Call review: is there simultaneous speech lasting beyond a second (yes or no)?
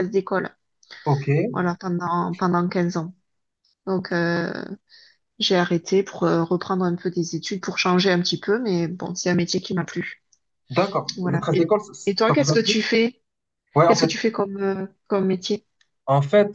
yes